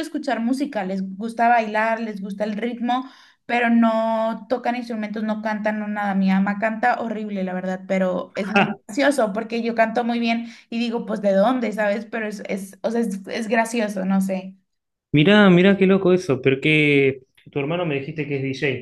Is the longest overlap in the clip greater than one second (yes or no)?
no